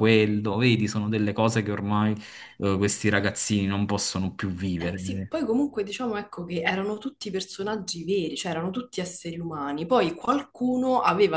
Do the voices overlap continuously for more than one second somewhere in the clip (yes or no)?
no